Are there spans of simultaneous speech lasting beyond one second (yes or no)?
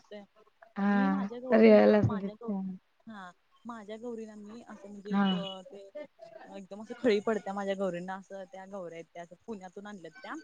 yes